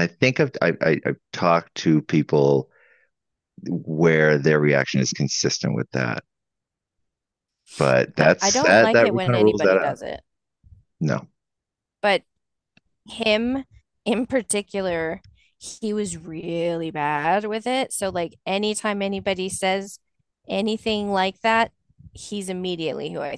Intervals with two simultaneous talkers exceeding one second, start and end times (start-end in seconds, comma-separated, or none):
8.2-10.0